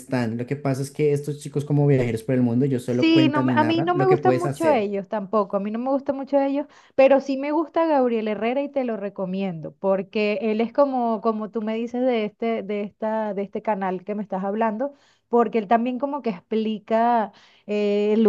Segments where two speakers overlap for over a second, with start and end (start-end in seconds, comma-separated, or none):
2.9-4.8